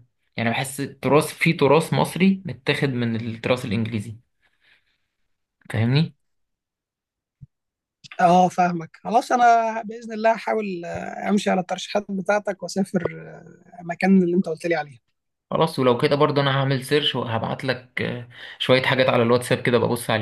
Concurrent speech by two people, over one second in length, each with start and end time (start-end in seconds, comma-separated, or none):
none